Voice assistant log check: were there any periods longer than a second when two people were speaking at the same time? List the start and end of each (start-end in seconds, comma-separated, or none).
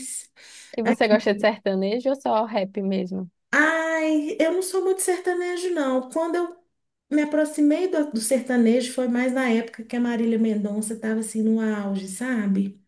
none